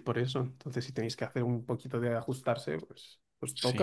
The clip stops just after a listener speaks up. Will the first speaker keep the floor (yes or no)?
no